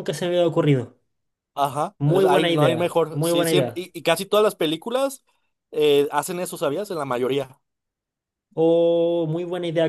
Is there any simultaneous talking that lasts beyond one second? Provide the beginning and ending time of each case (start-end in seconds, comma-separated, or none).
2.0-3.9